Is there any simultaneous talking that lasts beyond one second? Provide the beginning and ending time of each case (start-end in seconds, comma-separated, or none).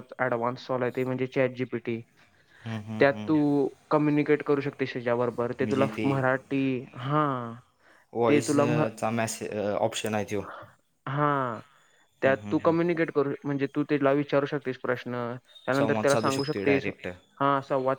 15.8-17.4